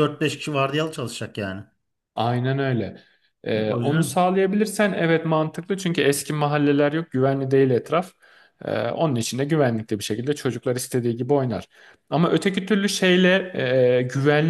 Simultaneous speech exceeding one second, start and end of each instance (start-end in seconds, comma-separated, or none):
none